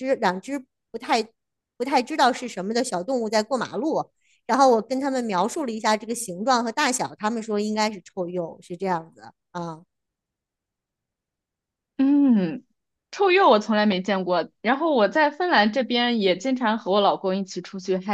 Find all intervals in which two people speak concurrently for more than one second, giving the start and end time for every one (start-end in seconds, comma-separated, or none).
none